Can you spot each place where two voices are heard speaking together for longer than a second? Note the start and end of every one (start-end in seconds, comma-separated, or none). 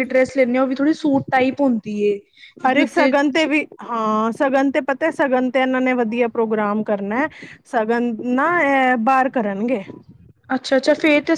none